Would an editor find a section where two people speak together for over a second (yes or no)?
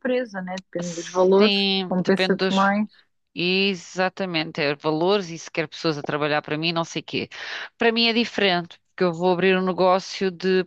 yes